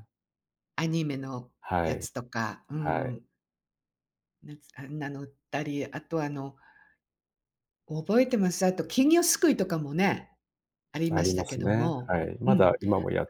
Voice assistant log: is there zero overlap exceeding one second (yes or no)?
no